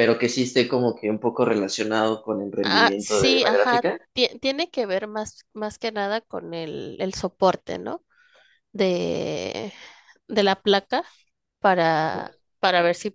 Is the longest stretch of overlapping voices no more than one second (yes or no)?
no